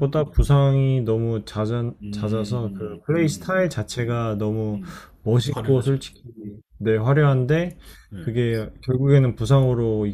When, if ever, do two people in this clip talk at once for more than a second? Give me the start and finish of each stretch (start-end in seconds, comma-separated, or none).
2.0-3.5